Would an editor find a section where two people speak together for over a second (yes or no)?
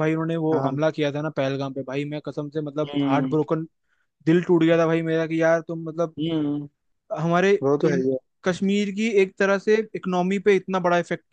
no